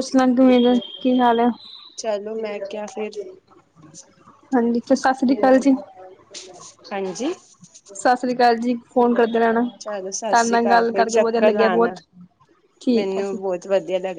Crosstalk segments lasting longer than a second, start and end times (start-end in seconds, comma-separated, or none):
9.8-11.9